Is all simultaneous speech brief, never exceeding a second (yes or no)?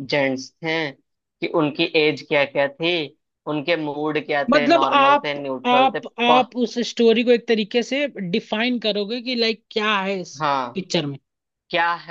no